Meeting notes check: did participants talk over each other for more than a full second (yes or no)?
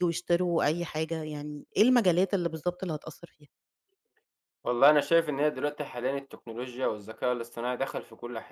no